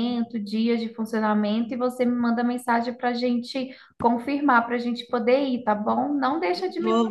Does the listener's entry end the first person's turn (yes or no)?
yes